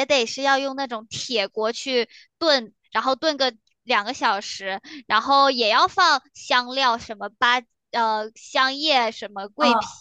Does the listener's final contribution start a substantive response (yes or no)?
no